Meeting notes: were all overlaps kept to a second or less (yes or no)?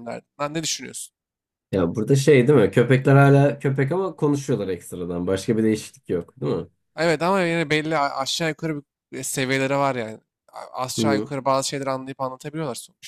yes